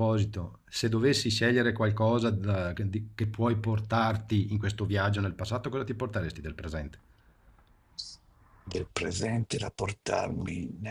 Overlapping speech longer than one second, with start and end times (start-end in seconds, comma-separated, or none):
none